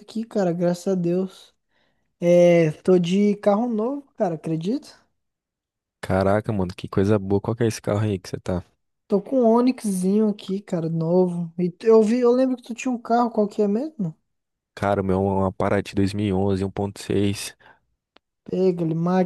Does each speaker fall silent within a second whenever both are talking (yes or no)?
yes